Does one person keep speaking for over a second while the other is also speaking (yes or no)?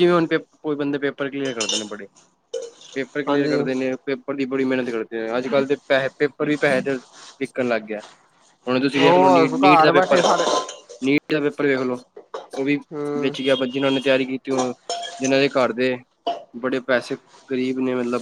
yes